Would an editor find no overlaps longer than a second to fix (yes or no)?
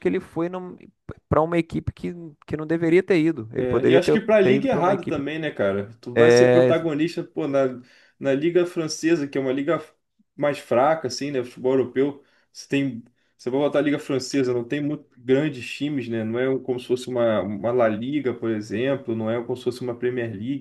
no